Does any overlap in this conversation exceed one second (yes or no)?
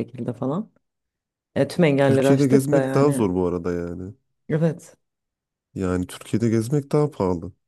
yes